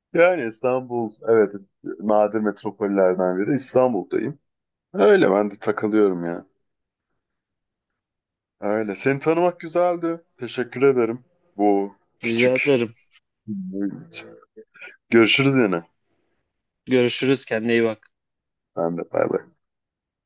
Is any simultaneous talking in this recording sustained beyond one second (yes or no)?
no